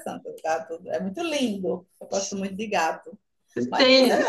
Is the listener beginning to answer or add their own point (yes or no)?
no